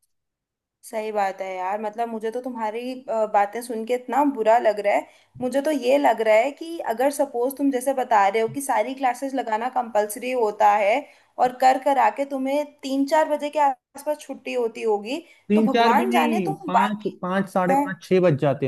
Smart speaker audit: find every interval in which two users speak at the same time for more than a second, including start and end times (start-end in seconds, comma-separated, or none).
15.5-17.1